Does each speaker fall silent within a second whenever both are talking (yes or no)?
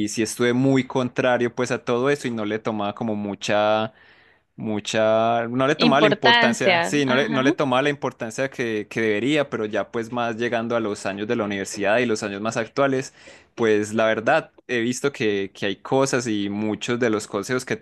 no